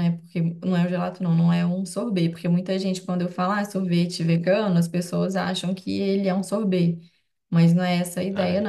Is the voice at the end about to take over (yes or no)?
yes